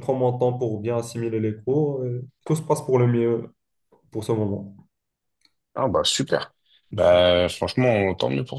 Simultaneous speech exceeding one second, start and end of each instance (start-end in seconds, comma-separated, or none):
none